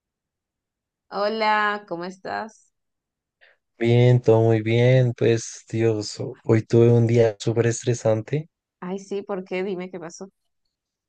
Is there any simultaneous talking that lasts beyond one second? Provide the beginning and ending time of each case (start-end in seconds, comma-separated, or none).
none